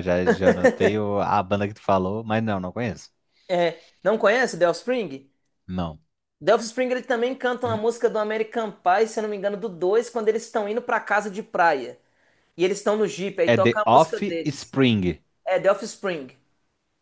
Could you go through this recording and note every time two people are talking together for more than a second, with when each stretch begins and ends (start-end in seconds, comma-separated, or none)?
13.4-14.8